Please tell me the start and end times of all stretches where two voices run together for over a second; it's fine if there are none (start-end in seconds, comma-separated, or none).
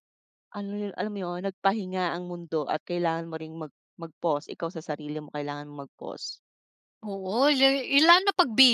none